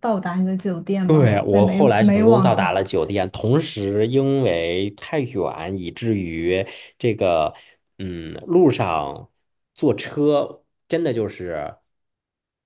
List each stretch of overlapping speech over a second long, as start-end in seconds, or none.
1.1-2.7